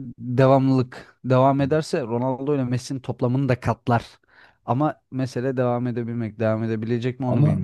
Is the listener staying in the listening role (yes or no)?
no